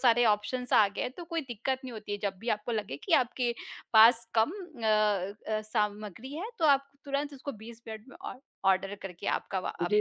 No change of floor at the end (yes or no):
no